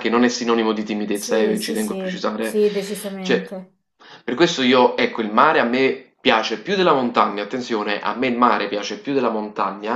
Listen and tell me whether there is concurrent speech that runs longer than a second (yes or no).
yes